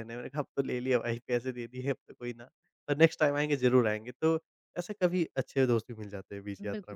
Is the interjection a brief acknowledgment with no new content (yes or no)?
no